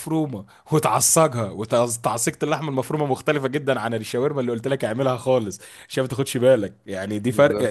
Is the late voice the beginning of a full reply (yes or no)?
no